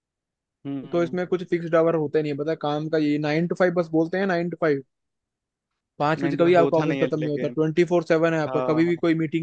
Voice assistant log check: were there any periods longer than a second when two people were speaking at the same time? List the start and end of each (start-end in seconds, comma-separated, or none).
6.2-7.6